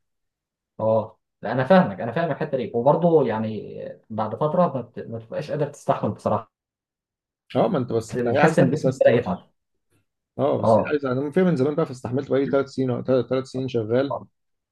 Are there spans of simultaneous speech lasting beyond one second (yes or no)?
yes